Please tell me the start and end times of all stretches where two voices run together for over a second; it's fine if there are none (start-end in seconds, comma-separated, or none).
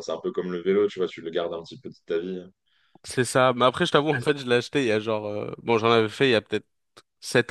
none